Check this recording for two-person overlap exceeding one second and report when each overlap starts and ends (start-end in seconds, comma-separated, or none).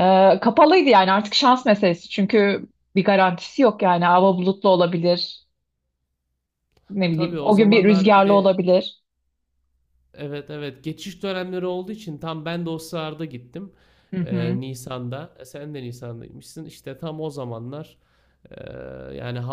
7.1-8.6